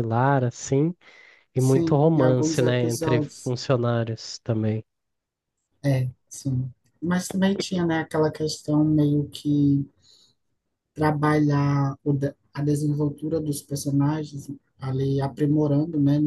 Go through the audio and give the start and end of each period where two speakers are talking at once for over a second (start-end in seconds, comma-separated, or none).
1.6-3.5